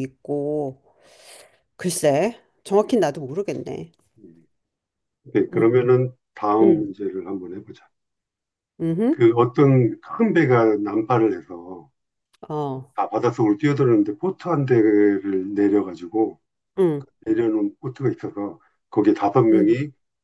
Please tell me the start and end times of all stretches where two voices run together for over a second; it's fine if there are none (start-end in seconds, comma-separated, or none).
none